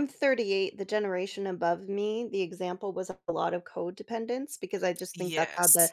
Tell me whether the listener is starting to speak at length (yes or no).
no